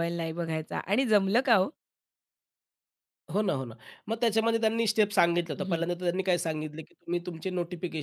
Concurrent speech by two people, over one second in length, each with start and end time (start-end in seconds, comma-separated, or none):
none